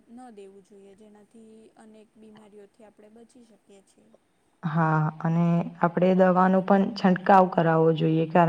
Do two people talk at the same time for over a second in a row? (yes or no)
no